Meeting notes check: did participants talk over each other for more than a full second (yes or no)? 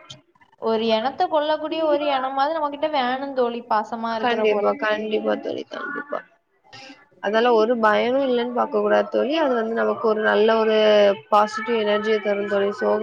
no